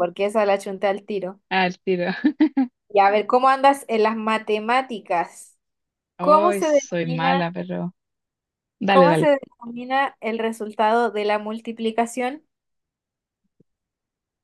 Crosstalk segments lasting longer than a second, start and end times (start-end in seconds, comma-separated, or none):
6.2-7.5